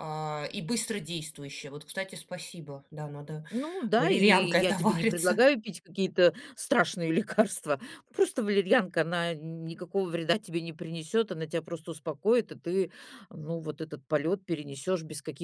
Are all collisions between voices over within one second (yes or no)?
no